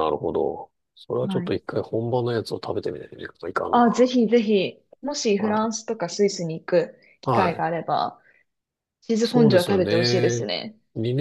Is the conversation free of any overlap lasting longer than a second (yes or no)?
no